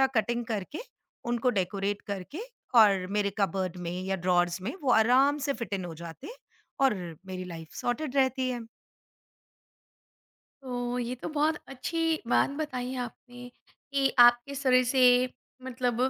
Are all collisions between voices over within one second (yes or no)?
yes